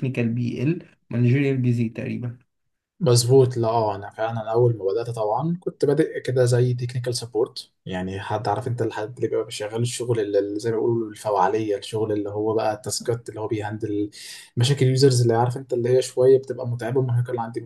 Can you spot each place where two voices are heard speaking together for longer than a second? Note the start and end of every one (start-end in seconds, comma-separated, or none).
none